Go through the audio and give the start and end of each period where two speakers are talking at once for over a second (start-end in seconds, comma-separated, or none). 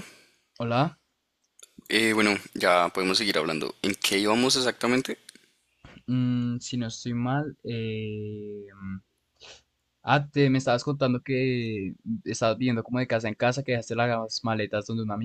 none